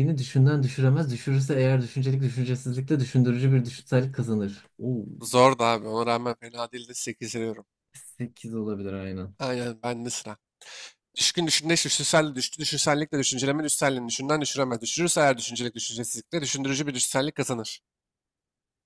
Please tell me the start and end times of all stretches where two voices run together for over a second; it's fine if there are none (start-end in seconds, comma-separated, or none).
none